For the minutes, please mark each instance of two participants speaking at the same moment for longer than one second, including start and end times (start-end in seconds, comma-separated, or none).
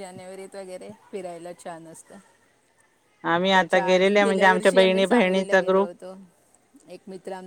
3.5-5.9